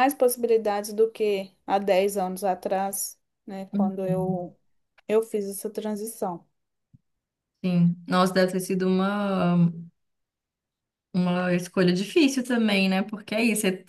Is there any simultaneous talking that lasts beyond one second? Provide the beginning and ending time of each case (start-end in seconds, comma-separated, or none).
none